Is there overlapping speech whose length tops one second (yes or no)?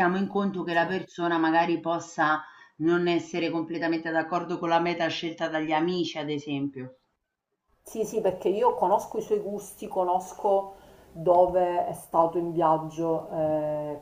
no